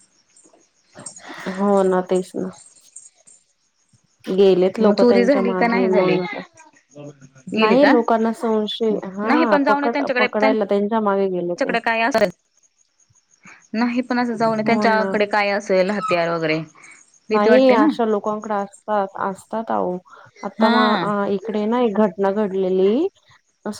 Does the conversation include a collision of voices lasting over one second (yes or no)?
yes